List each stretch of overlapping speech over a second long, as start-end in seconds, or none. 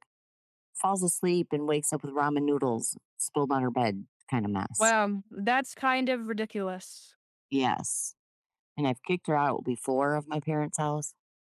none